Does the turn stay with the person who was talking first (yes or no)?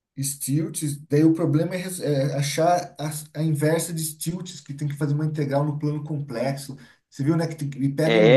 no